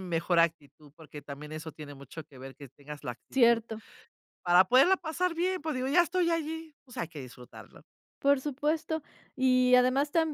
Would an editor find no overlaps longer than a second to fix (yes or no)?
yes